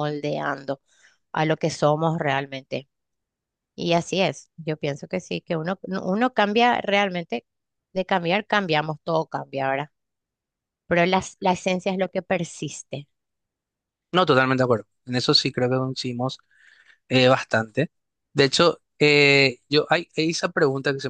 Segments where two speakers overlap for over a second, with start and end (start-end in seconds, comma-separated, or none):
none